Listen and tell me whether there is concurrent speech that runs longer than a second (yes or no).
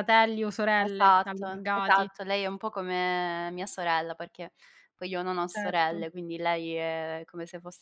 yes